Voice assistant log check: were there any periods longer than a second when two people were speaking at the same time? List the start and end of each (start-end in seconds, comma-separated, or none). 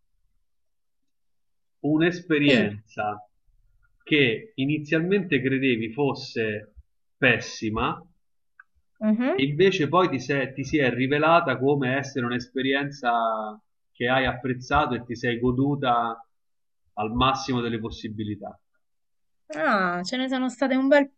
none